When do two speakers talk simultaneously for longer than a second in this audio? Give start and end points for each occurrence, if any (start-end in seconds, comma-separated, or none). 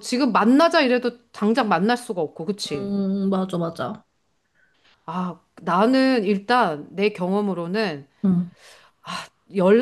none